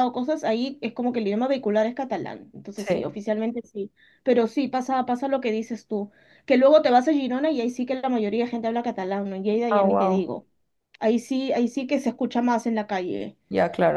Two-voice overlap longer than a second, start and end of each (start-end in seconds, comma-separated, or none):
none